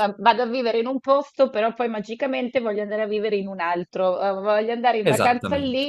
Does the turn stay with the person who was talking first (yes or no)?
yes